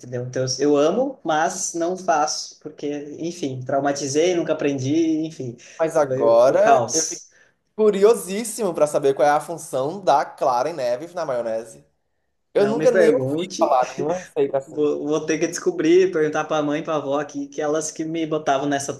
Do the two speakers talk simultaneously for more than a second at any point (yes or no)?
yes